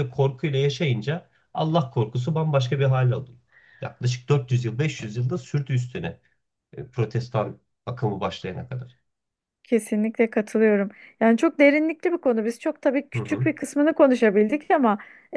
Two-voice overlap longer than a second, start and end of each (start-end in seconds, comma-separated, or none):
none